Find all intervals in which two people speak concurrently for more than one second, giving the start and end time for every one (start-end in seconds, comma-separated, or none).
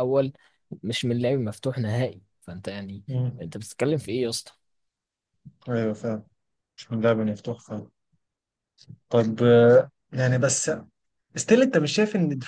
none